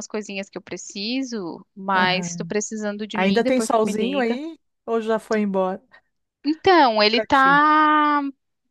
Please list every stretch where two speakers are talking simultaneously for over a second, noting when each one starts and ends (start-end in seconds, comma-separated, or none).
3.1-4.4